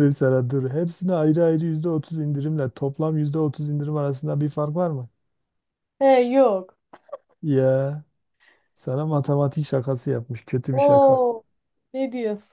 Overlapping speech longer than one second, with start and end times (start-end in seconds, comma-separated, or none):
none